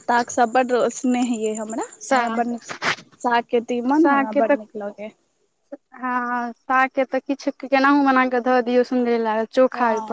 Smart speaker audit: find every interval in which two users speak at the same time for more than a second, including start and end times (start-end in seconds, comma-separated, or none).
none